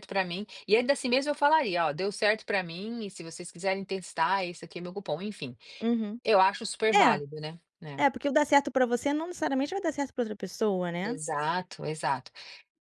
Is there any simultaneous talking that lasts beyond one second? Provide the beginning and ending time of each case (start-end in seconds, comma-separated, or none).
none